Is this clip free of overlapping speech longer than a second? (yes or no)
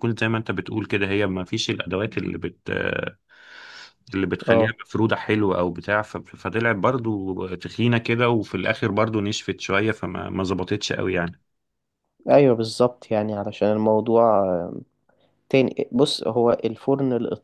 yes